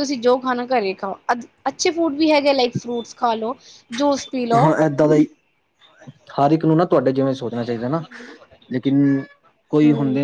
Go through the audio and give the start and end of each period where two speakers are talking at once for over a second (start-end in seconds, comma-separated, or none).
none